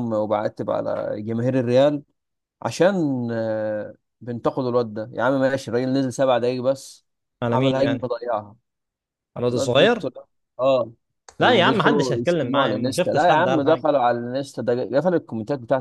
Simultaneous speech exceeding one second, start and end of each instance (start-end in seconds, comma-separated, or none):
11.4-13.8